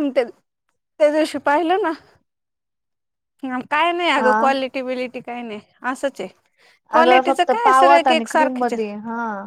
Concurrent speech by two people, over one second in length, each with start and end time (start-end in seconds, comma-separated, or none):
7.0-9.0